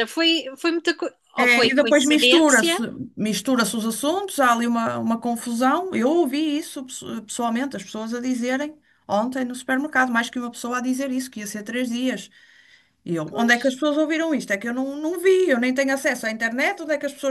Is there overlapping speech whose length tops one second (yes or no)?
yes